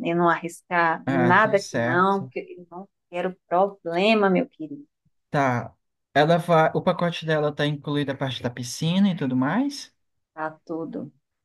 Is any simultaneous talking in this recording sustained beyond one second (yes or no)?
yes